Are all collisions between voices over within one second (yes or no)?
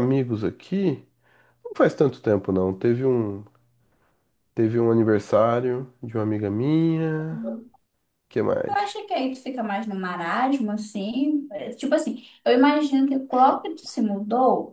yes